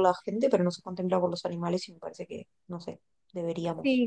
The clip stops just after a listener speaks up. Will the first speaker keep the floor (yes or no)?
no